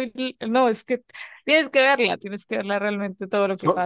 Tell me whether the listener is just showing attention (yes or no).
yes